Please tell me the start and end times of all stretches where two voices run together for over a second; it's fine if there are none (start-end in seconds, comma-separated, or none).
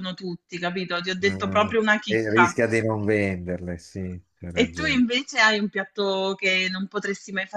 1.2-2.6